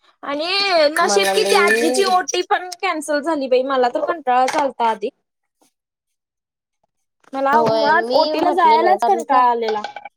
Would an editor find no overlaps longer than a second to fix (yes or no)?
no